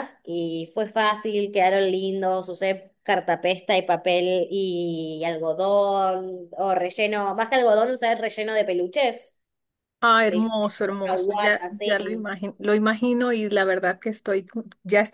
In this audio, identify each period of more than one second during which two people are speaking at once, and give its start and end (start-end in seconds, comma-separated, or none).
10.3-12.3